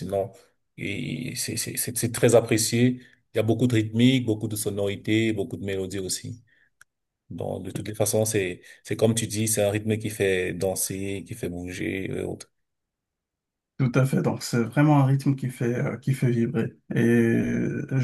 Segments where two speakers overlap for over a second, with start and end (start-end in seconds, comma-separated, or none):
none